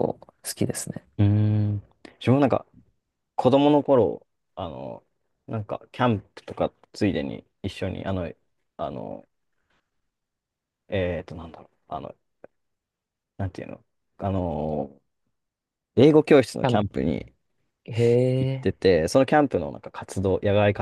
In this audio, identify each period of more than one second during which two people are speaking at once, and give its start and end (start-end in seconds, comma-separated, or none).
none